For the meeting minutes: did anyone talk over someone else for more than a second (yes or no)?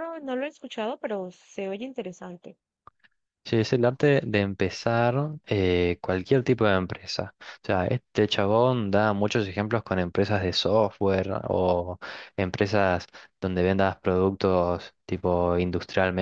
no